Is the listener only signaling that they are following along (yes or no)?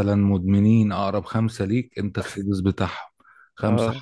yes